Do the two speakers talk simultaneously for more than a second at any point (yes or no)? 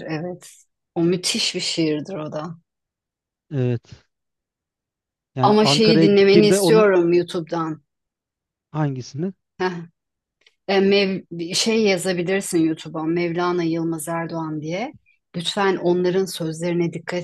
yes